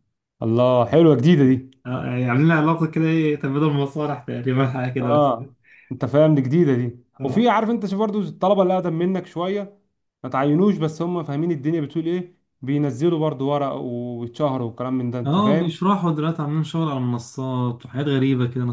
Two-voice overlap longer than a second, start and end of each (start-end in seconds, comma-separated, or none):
none